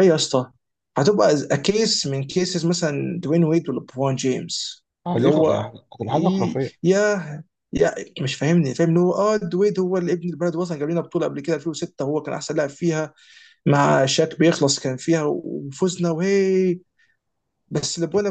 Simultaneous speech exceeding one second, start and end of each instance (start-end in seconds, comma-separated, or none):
5.1-6.9